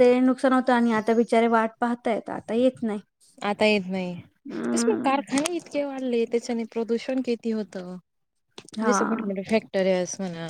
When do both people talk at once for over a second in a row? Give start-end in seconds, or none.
none